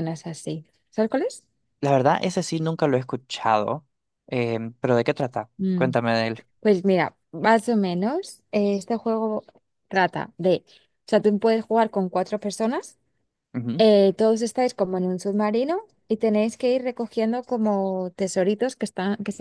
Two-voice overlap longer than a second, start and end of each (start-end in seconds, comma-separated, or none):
none